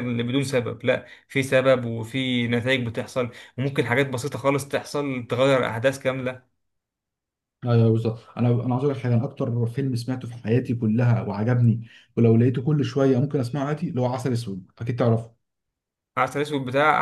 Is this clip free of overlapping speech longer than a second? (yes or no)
yes